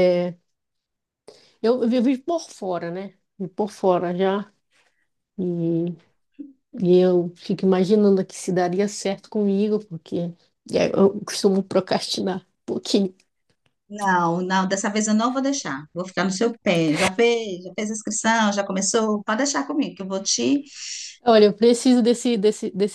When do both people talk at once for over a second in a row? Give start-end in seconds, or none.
none